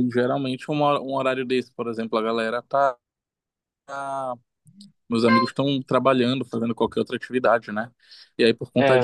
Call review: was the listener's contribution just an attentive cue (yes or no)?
yes